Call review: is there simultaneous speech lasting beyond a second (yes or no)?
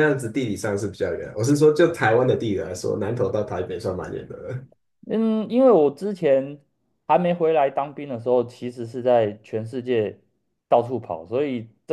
no